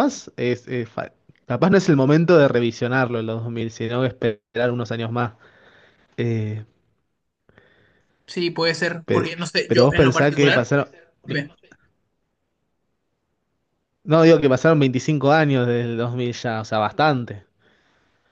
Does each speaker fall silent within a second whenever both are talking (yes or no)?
no